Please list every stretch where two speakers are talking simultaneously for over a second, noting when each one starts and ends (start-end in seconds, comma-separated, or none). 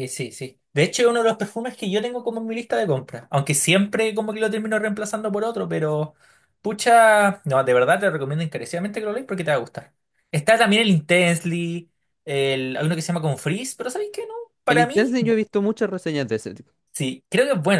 none